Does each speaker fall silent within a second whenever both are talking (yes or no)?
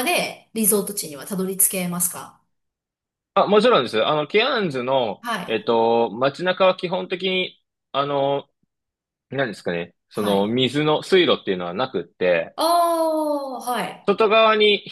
yes